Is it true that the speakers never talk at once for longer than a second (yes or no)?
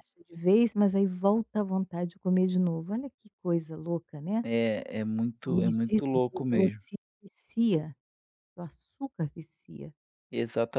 no